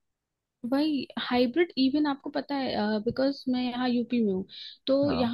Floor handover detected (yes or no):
no